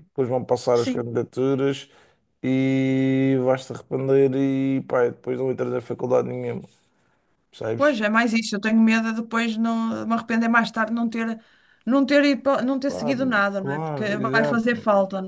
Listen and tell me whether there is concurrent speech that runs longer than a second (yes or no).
yes